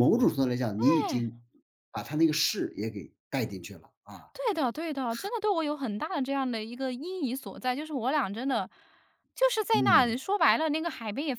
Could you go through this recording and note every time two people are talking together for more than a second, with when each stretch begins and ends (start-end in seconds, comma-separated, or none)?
none